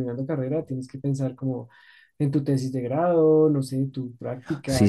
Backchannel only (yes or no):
no